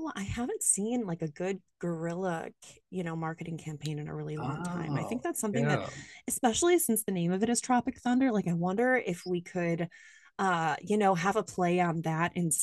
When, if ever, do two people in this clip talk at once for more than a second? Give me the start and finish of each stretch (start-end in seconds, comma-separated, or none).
4.4-5.8